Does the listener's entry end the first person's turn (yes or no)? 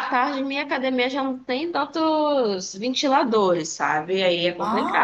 yes